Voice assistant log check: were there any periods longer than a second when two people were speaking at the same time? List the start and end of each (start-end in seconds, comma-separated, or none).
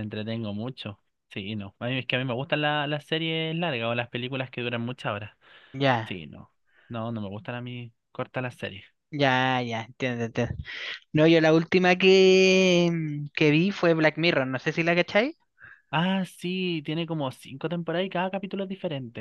none